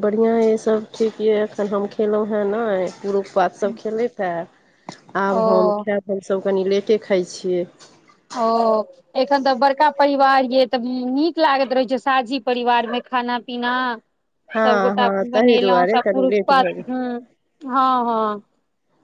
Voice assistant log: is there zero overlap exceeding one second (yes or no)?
no